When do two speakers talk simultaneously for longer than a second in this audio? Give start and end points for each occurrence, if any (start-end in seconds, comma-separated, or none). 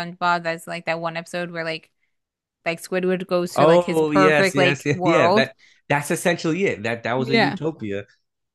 3.5-5.5